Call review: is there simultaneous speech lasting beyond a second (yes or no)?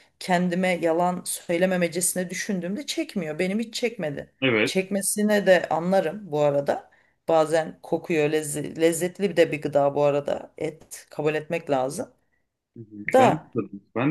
no